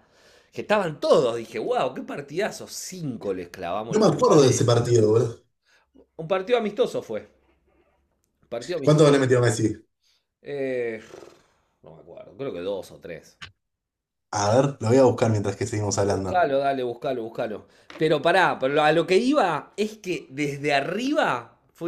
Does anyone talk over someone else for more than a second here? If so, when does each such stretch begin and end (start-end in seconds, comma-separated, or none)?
3.9-5.2